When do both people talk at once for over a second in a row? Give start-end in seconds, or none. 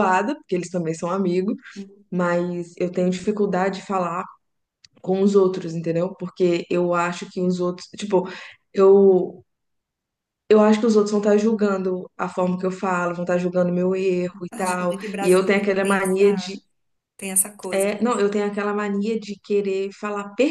14.5-16.6